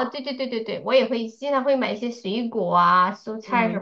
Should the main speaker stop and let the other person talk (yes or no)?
yes